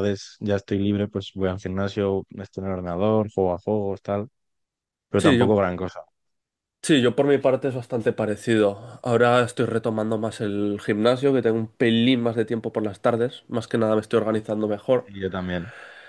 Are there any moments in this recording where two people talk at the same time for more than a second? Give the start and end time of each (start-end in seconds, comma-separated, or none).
none